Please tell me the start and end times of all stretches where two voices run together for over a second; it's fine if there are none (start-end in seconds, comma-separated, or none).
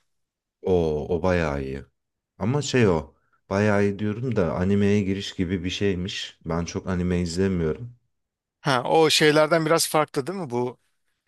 none